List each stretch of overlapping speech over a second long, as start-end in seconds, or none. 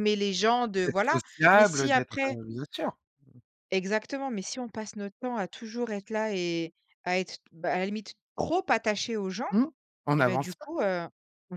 0.8-2.4